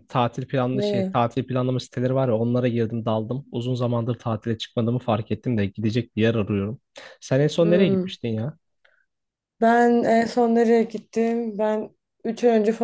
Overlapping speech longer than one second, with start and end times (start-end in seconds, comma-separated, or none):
none